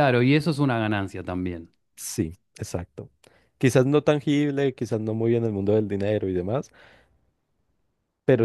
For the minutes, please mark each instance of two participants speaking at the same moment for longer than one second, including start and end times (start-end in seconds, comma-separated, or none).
none